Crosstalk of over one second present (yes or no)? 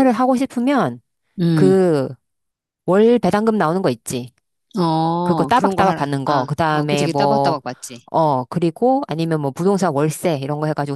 yes